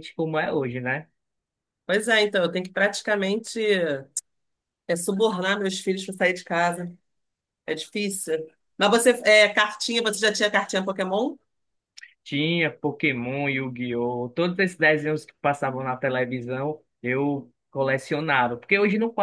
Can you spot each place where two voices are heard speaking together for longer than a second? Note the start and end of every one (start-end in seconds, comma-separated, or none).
none